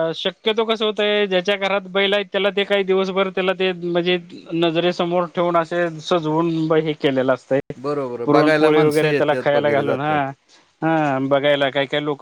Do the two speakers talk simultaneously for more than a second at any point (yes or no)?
yes